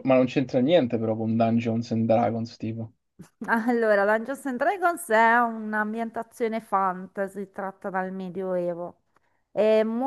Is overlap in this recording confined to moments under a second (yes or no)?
yes